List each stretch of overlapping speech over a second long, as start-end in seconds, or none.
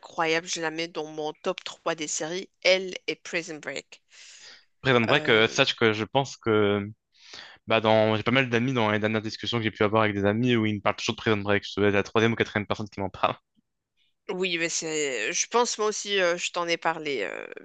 none